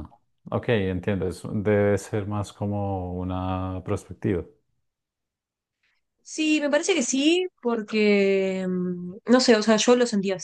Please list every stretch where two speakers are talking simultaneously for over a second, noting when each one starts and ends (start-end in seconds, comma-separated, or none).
none